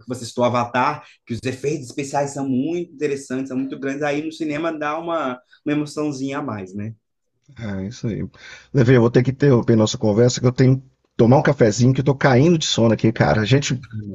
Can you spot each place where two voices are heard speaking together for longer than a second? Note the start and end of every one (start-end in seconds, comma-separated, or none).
none